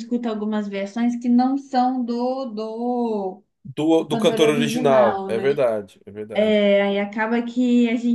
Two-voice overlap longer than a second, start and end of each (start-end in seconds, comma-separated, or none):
4.1-5.6